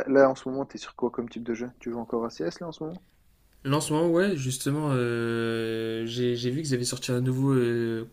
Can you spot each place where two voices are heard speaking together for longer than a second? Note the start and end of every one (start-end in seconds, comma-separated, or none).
none